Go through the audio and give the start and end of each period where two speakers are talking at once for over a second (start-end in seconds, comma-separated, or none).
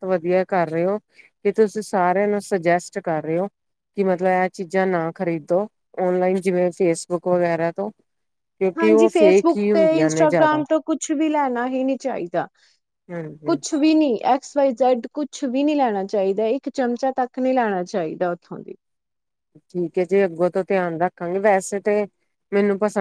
8.8-10.6